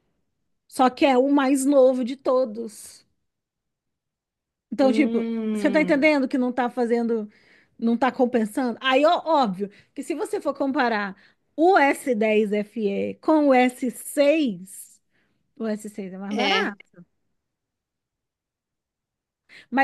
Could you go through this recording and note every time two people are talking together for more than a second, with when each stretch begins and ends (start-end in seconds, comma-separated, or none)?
4.8-6.1